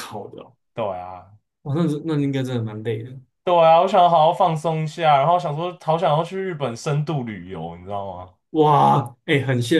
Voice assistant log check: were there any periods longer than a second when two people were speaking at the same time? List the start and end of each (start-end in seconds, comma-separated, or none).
none